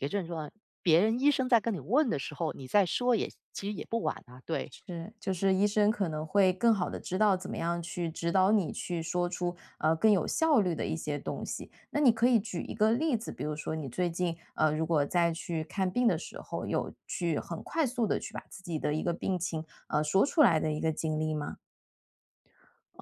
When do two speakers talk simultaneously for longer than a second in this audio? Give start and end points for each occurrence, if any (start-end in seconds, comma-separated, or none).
none